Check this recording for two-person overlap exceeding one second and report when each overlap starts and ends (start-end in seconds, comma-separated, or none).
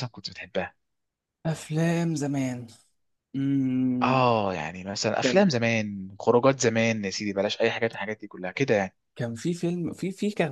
none